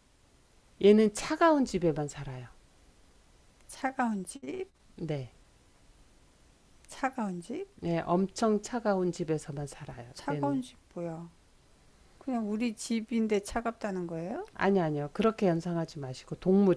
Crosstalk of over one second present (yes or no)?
no